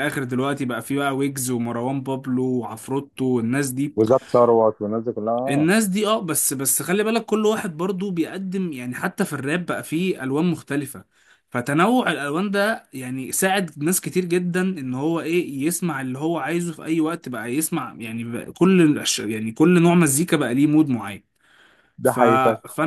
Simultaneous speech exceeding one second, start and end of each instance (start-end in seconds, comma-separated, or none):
none